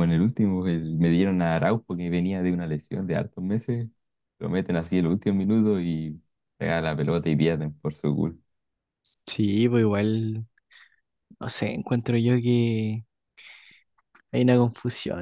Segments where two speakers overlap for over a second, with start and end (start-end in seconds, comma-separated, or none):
none